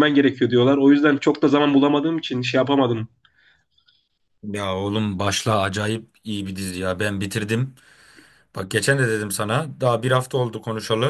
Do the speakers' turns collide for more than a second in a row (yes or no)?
no